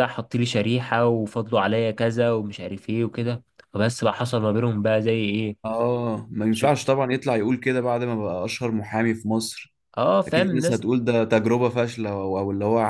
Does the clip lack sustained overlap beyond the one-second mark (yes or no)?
yes